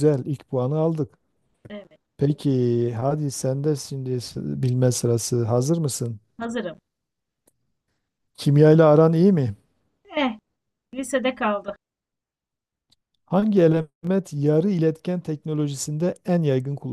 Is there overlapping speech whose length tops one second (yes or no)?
no